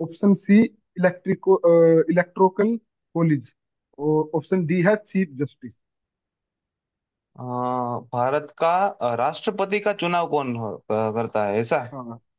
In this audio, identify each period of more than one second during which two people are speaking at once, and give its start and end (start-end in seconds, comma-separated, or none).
none